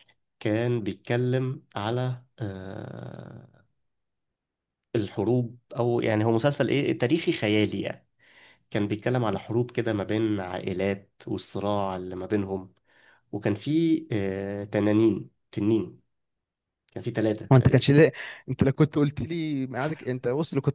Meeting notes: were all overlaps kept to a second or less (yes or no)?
yes